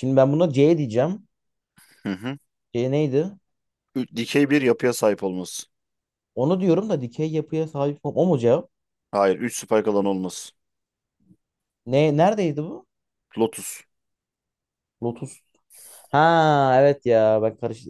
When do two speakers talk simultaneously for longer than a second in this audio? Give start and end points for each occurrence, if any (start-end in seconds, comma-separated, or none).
none